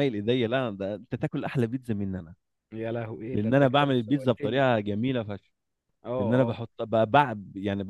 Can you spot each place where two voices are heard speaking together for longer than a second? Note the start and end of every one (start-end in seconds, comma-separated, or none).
3.3-4.7